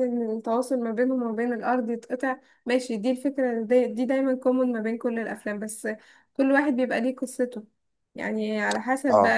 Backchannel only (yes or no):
yes